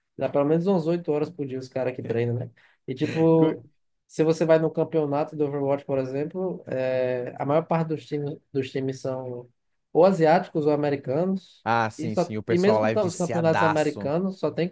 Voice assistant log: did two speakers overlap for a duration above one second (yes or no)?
yes